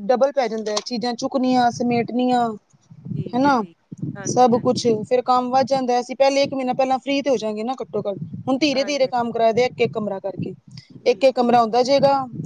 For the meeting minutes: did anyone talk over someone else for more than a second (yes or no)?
no